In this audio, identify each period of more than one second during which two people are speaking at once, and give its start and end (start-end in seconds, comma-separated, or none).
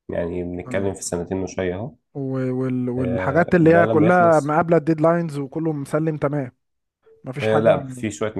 3.0-4.6